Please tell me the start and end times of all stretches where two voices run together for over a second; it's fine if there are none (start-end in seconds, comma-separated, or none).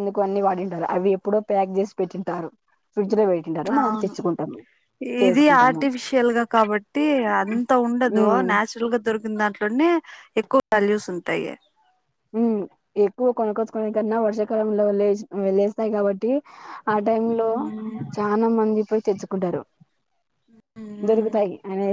none